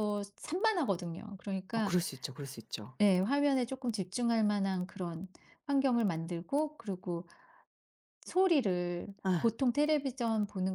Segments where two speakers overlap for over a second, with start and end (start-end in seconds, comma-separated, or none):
none